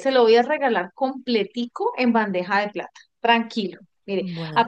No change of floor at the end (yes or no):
yes